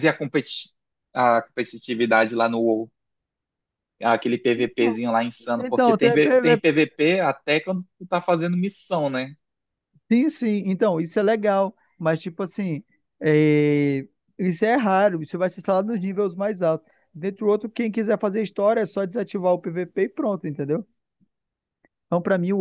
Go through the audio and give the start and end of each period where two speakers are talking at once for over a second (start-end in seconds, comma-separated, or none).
5.6-6.8